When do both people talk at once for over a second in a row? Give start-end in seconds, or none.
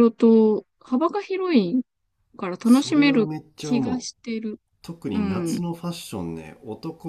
2.6-4.1